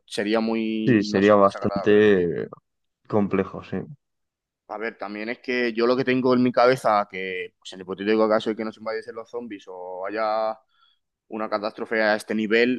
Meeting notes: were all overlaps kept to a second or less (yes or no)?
no